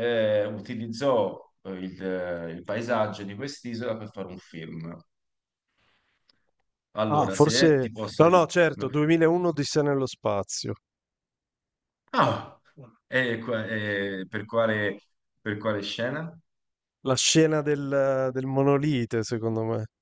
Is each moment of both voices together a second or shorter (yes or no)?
no